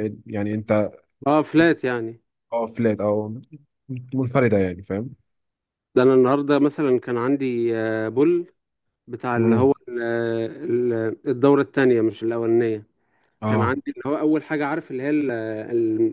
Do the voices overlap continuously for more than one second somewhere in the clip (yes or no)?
no